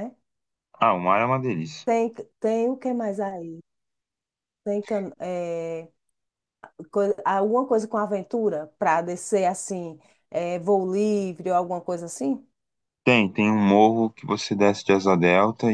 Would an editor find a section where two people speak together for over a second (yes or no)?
no